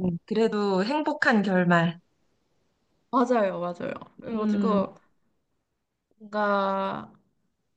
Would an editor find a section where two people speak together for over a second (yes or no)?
no